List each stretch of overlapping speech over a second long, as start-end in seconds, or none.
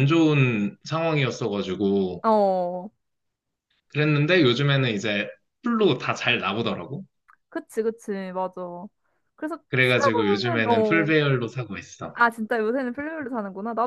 9.7-11.1